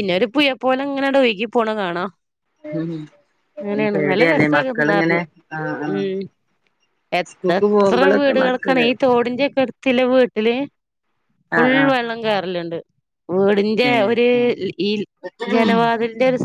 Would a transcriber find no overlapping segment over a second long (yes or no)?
no